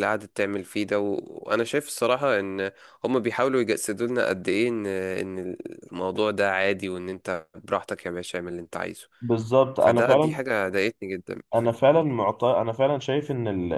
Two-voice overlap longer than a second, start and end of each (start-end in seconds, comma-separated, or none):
none